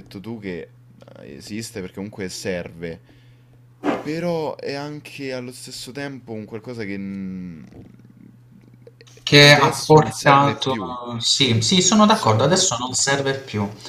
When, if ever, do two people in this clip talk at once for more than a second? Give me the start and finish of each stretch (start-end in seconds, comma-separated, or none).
9.4-10.8